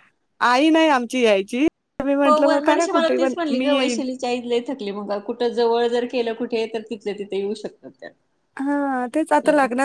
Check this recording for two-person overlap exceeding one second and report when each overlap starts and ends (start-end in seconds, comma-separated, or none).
none